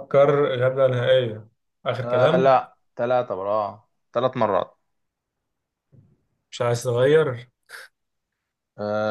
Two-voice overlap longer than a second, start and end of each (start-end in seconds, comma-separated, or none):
none